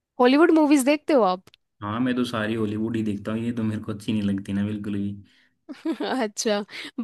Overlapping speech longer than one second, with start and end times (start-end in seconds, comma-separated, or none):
none